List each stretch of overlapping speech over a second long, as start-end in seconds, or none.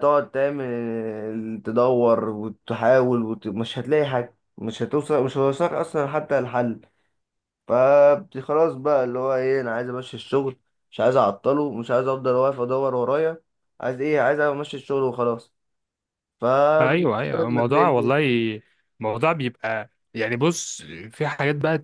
16.8-18.2